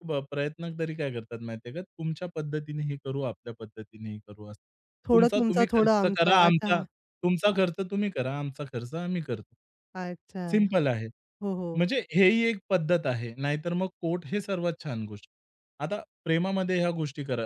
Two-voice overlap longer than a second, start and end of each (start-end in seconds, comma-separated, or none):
5.1-6.8